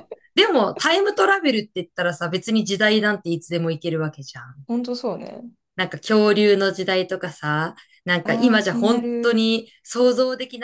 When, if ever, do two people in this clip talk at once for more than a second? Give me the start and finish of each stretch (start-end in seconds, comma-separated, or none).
8.2-9.4